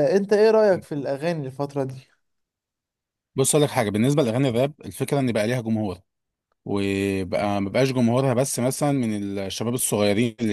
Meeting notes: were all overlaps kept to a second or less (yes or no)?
yes